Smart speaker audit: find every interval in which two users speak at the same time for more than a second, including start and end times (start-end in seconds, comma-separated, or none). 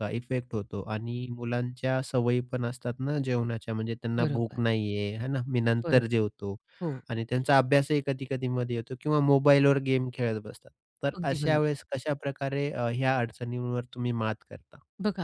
none